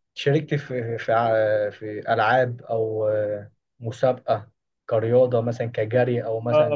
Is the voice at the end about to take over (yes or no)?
yes